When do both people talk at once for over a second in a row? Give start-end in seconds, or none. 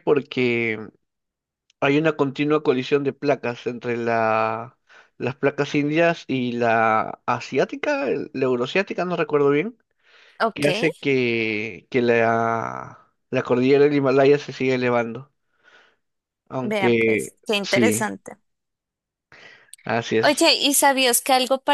16.6-18.1